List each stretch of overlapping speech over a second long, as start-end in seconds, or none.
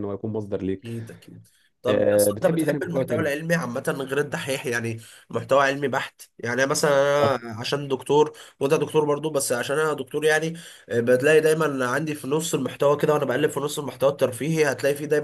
1.9-3.3